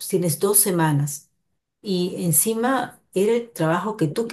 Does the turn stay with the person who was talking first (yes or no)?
yes